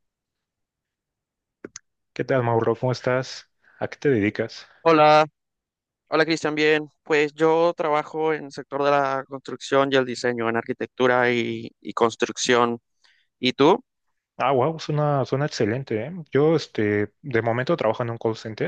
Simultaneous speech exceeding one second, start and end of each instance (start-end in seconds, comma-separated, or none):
none